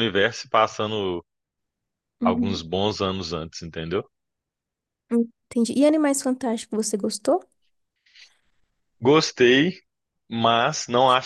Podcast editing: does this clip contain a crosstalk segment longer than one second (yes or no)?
no